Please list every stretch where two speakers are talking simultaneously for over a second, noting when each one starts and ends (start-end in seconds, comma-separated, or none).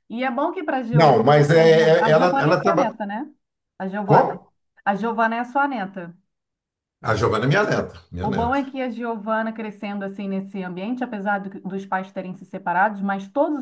0.9-2.9